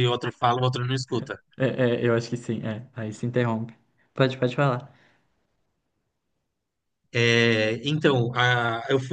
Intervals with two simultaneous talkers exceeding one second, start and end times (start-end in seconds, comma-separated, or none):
none